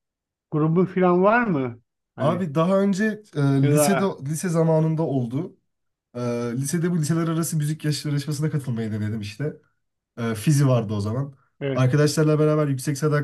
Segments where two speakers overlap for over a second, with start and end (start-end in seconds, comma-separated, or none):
none